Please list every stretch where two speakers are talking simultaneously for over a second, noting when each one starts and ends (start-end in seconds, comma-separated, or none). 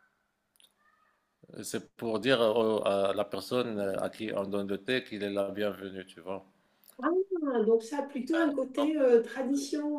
none